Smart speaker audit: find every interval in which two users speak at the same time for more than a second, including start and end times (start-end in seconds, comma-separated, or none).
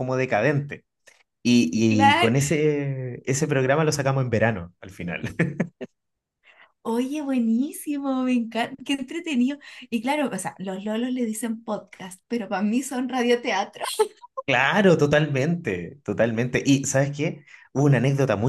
none